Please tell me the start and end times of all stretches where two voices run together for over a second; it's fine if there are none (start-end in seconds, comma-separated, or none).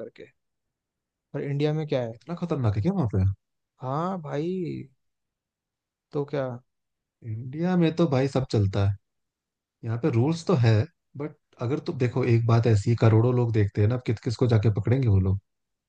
none